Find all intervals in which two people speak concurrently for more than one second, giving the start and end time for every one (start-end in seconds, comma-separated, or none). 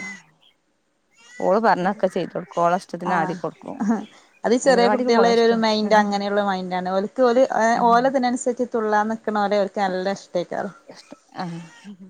4.6-6.1